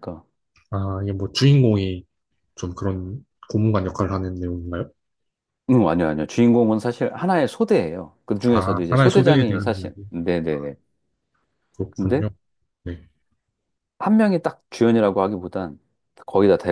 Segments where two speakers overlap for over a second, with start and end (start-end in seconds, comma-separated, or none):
8.5-10.0